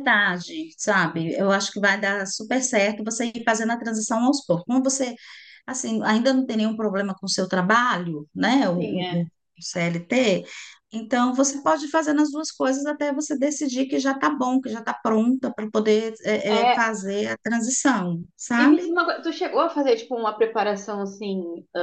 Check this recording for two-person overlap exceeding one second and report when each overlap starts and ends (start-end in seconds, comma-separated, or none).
none